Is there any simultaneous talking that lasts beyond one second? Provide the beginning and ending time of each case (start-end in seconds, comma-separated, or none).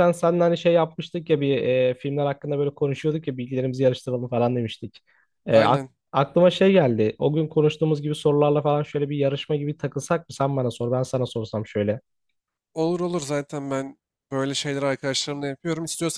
none